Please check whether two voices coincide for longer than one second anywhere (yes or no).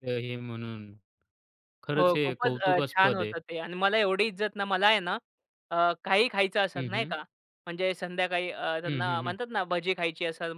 yes